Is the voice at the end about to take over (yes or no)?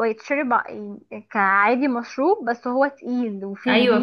yes